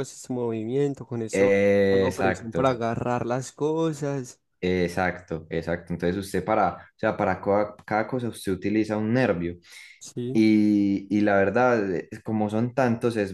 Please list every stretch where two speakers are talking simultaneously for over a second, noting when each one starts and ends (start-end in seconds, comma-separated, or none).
1.3-2.8